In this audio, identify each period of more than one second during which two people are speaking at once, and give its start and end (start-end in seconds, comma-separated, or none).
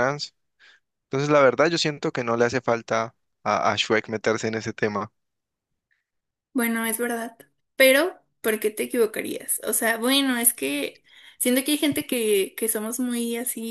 none